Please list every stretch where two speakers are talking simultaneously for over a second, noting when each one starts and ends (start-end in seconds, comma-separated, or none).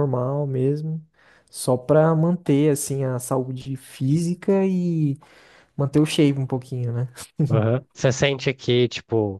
none